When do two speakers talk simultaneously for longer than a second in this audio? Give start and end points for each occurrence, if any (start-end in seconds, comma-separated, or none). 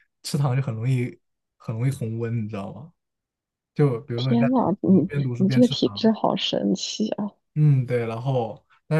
4.2-6.1